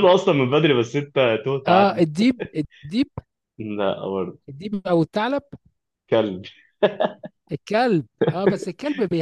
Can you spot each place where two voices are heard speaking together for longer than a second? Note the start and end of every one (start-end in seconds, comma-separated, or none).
none